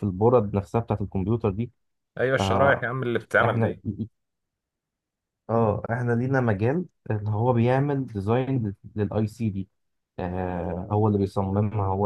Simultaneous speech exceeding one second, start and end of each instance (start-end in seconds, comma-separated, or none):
none